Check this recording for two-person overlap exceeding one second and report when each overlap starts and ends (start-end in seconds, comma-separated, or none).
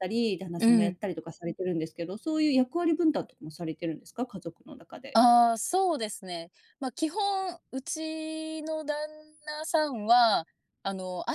none